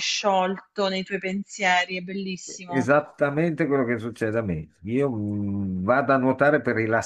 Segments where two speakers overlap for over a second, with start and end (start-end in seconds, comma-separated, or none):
none